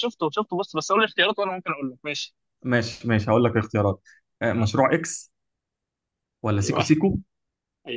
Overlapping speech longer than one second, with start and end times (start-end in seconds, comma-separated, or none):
none